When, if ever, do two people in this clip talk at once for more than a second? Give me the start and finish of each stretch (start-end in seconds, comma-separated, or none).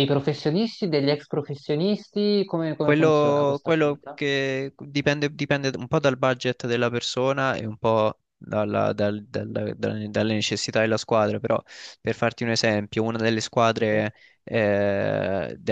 2.8-4.2